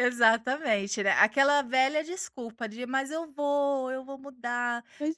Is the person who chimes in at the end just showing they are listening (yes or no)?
no